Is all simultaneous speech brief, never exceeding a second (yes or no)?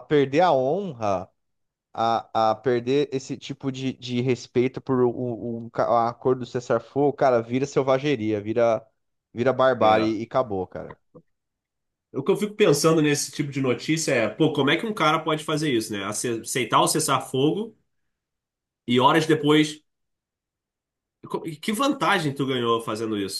yes